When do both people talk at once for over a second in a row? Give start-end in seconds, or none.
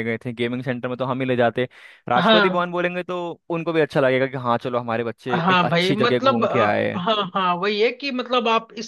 5.3-7.0